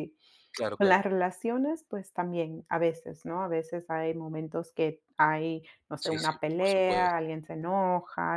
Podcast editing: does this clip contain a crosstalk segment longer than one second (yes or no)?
yes